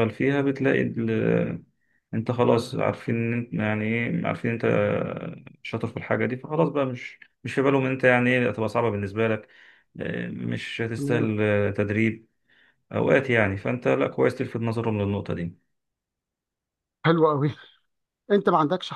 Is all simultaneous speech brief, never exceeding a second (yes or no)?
yes